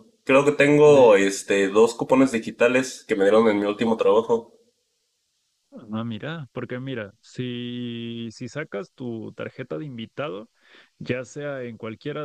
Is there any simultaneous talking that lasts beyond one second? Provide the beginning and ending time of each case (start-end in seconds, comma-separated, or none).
none